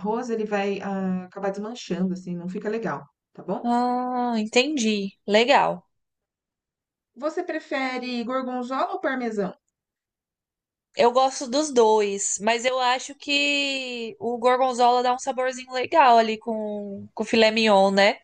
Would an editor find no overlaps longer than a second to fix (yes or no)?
yes